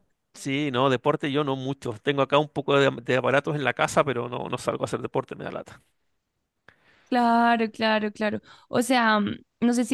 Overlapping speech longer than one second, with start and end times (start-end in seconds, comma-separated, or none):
none